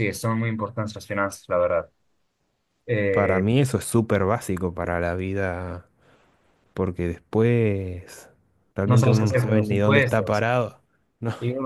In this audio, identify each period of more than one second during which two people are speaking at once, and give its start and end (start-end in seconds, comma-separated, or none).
8.8-10.4